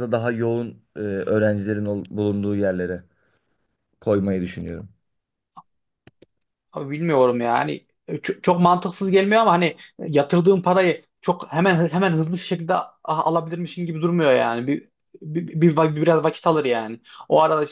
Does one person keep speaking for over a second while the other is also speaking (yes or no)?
no